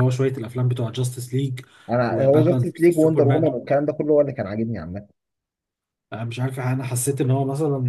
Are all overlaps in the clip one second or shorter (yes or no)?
no